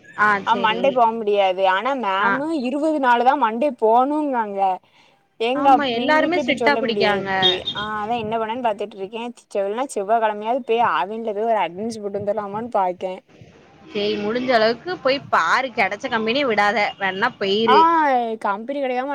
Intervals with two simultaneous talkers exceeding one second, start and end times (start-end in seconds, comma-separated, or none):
5.6-7.3